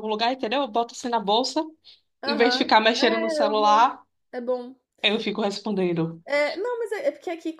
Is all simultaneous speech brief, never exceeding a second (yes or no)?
no